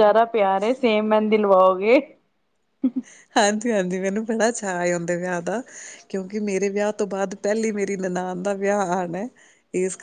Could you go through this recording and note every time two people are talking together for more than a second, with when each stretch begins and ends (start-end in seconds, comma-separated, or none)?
none